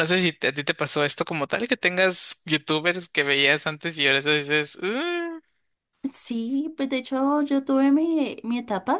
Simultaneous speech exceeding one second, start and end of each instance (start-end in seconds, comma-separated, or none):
none